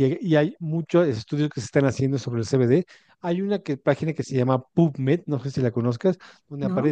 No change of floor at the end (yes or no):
yes